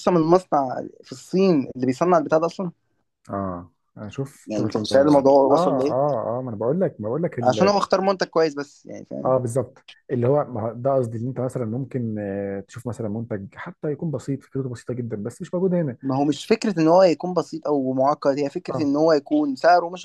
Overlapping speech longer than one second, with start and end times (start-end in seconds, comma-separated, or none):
4.5-6.1